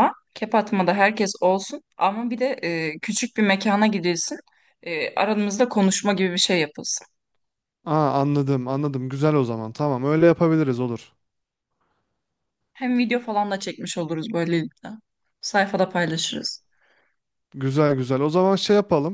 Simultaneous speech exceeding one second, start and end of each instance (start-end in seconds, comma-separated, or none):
none